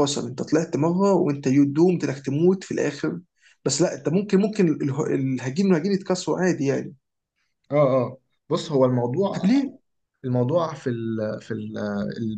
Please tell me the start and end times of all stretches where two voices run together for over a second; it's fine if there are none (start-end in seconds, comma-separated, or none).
none